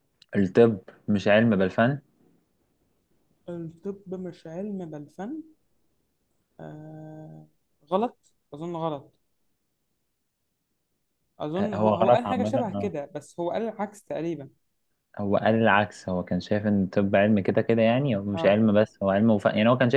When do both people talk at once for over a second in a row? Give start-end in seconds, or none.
11.6-12.9